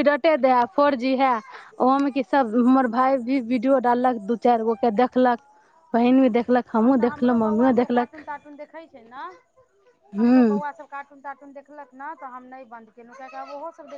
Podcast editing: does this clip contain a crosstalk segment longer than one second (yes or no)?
yes